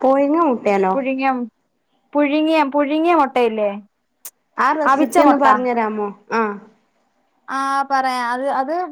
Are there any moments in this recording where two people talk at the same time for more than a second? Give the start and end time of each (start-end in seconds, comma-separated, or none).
none